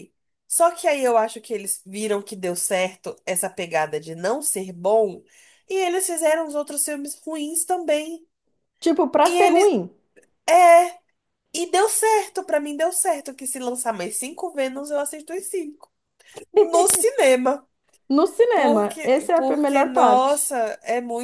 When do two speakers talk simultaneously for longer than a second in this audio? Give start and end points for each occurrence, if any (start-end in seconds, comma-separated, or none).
18.5-20.5